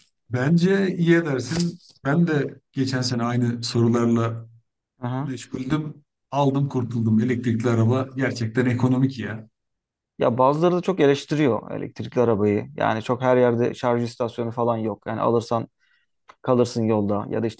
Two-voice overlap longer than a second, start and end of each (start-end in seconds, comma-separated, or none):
none